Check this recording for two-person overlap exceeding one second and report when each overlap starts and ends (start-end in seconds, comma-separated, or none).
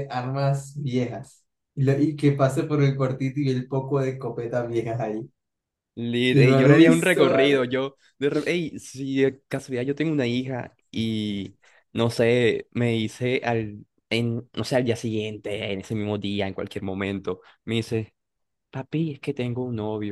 6.3-7.6